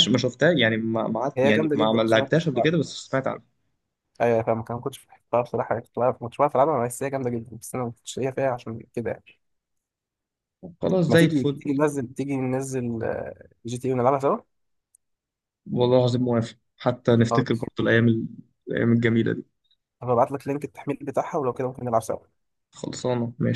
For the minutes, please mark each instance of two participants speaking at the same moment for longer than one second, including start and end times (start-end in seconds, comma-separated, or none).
1.4-2.7